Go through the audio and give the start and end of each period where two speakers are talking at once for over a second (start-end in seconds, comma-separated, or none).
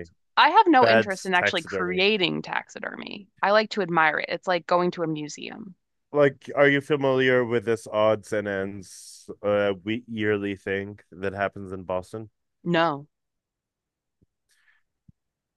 0.8-2.0